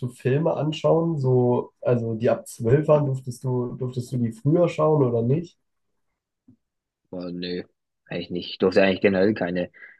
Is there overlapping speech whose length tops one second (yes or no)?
no